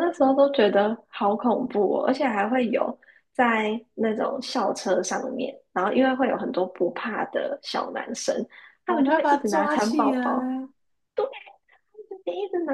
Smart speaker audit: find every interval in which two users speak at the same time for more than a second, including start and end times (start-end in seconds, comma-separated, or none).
8.8-10.6